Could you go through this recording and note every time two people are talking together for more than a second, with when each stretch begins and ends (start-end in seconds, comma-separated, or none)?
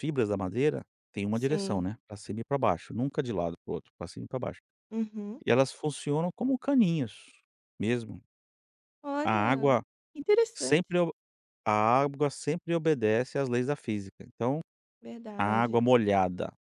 none